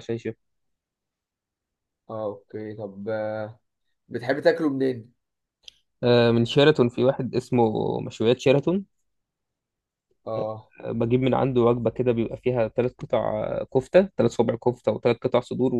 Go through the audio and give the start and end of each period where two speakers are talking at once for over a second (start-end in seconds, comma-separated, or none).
none